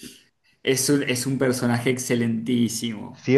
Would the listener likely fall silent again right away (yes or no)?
no